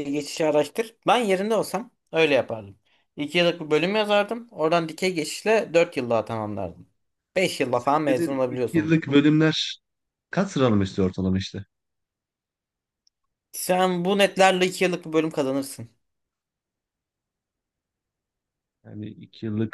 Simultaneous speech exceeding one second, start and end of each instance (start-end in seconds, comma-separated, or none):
7.7-8.9